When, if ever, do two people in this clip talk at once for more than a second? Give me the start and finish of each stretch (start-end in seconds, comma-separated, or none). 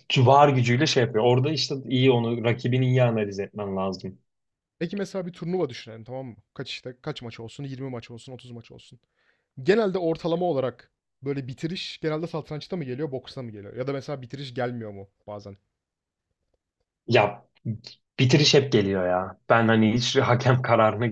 none